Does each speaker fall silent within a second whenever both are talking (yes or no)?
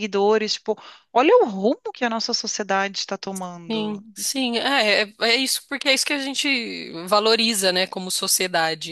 yes